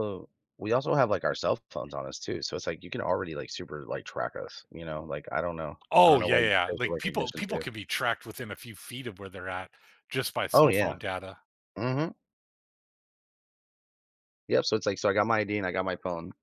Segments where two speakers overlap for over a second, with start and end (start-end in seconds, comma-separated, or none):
5.9-7.6